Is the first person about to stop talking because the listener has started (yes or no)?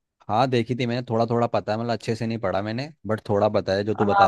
yes